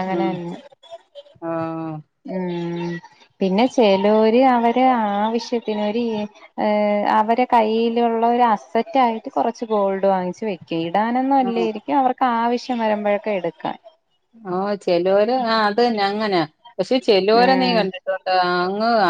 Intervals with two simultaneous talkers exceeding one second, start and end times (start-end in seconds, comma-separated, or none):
none